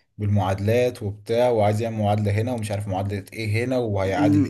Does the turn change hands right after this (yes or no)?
yes